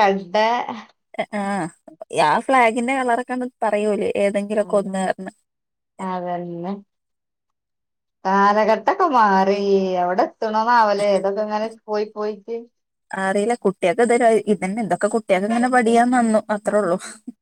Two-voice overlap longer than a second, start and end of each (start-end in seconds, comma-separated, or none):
none